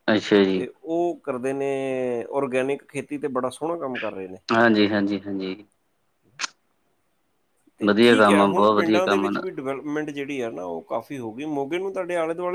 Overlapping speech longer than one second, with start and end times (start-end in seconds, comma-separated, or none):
7.9-9.4